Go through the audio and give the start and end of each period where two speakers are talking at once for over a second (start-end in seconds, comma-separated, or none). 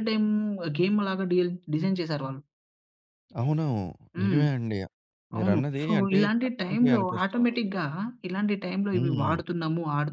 5.4-7.6